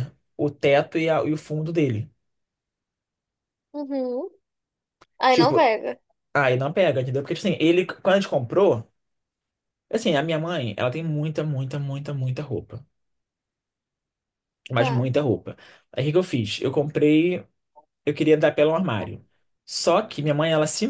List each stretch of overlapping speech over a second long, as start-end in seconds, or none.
none